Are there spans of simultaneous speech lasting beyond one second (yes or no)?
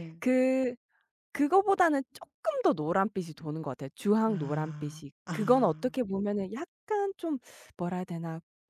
yes